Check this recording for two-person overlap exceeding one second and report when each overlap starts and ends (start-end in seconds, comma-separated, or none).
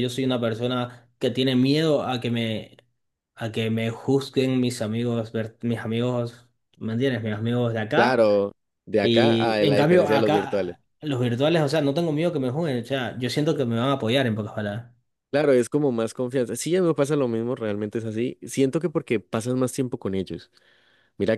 9.0-10.8